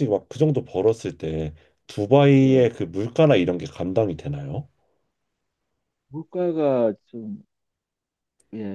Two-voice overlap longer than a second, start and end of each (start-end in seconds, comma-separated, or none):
none